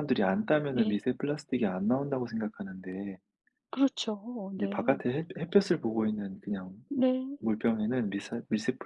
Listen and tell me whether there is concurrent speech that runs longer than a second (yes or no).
no